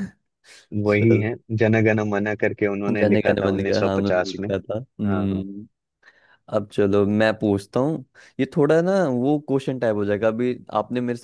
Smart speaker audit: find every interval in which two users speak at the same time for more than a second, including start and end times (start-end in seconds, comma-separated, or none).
3.0-5.4